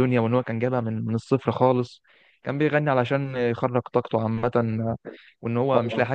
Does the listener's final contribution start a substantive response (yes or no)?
no